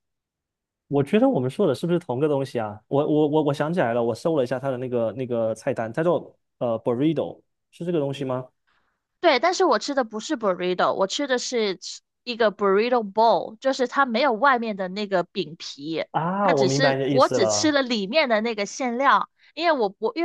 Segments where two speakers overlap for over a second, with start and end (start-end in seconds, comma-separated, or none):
16.4-17.7